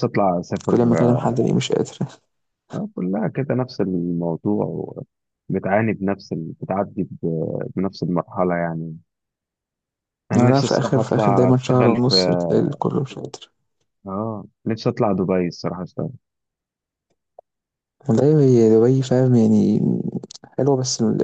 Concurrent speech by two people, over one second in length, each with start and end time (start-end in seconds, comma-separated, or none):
10.3-12.1